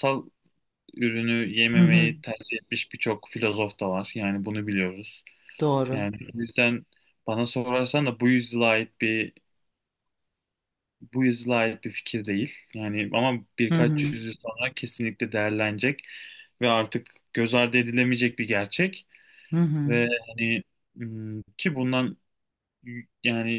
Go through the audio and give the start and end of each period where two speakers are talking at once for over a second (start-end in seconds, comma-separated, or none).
none